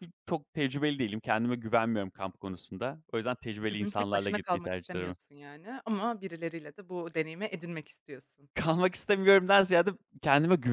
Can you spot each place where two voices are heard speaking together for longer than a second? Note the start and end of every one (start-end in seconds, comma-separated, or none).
3.7-5.2